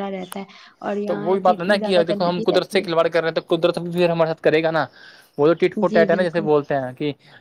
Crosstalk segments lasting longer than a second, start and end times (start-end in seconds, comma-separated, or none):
1.1-2.8